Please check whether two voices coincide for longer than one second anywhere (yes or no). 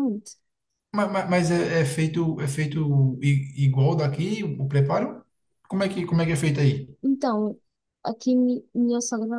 no